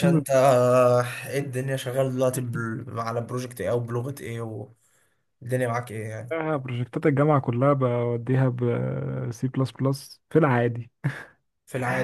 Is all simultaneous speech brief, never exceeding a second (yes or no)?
yes